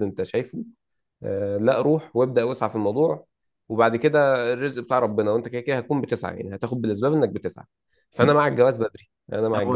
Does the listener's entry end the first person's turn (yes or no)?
yes